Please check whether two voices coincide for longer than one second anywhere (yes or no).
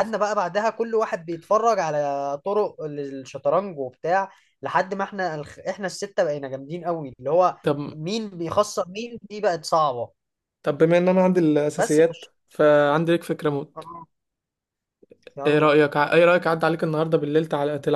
no